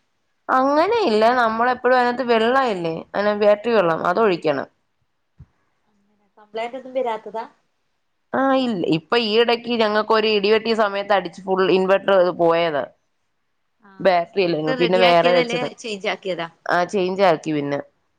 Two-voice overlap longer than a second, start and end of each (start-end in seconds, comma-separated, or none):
14.0-15.7